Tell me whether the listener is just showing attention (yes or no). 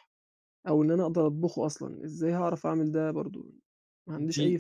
no